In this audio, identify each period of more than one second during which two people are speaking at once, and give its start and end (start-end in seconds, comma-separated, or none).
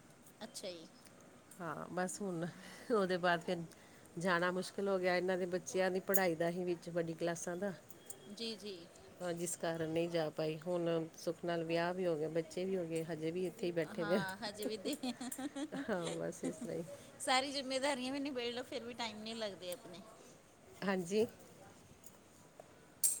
none